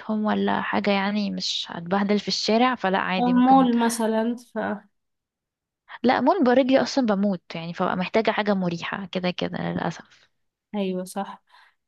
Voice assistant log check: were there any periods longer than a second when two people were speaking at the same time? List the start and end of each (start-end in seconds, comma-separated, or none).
none